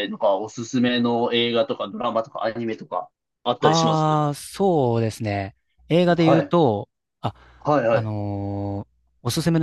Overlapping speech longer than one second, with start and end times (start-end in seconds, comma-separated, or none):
none